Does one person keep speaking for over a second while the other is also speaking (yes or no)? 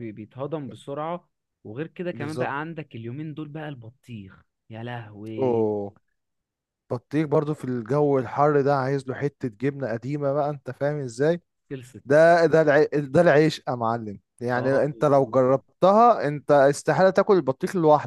no